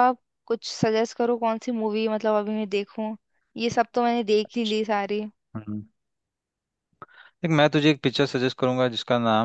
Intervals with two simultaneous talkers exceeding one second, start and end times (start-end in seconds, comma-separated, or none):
none